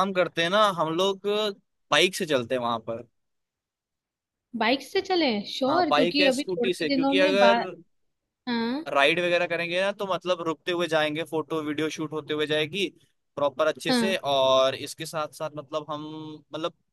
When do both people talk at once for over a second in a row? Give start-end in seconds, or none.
5.7-7.5